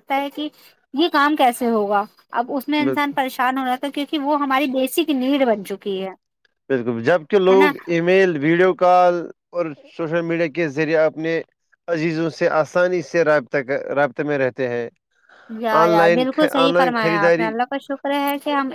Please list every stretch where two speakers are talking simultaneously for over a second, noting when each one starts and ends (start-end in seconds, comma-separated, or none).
15.8-17.5